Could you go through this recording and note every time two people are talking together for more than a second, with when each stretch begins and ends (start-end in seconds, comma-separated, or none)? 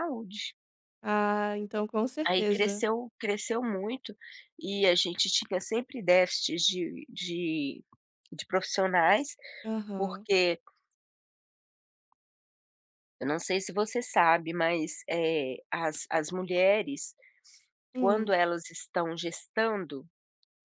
none